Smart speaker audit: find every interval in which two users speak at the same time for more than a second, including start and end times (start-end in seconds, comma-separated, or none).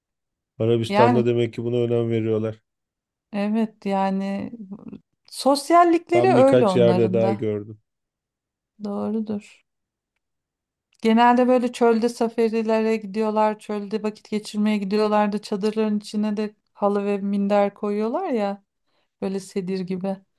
6.1-7.5